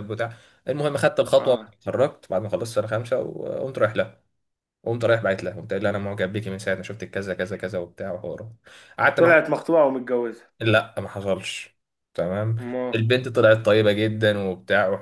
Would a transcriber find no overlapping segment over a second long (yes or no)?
yes